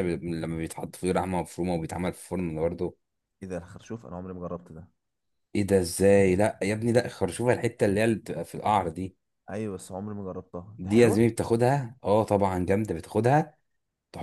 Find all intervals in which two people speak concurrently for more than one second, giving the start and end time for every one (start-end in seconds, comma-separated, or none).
none